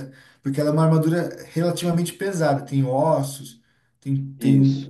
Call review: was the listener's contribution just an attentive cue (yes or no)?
yes